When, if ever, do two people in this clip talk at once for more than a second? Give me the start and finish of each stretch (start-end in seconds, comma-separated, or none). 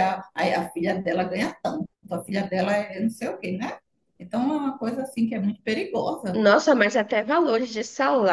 none